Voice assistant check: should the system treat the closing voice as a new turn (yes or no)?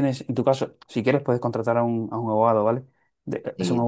no